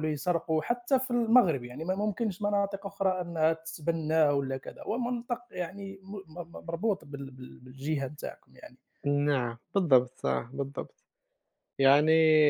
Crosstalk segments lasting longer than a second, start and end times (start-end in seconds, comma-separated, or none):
none